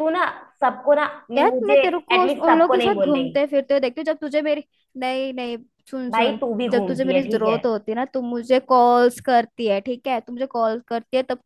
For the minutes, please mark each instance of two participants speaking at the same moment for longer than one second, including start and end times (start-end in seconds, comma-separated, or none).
1.4-3.4, 6.1-7.6